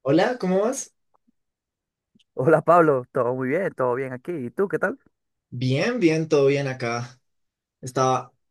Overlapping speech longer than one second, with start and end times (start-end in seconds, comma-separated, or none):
none